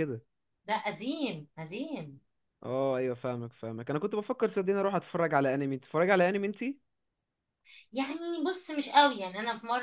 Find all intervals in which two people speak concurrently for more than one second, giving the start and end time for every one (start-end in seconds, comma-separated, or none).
none